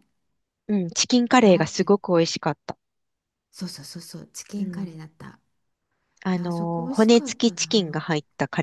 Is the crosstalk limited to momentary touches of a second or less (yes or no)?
no